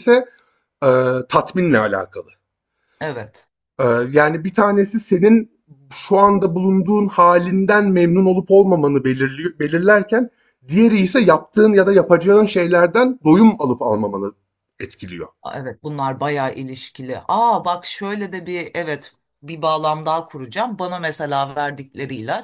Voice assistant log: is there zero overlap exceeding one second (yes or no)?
yes